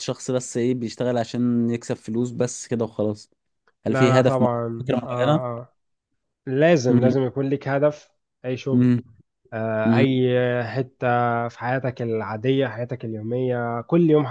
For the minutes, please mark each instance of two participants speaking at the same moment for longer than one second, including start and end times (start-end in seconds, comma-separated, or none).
3.9-5.4